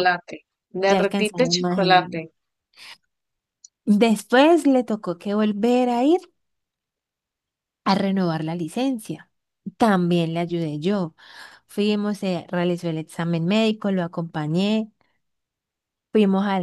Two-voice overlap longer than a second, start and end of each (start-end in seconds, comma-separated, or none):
0.9-2.2